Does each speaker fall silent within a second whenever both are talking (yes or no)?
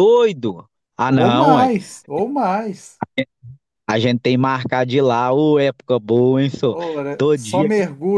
yes